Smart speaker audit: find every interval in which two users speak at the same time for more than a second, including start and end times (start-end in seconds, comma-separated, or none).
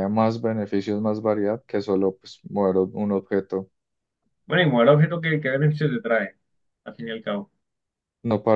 none